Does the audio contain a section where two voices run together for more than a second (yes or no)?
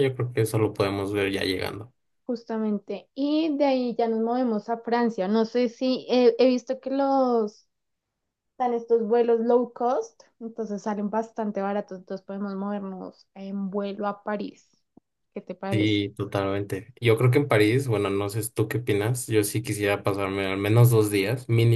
no